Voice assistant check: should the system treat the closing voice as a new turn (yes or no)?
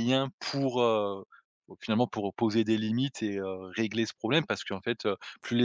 no